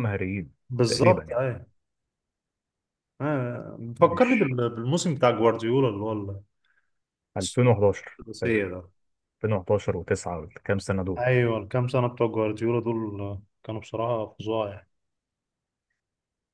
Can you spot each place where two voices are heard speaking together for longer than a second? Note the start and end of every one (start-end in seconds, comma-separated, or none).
none